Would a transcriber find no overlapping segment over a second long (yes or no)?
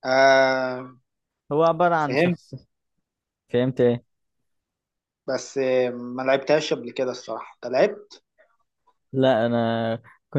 yes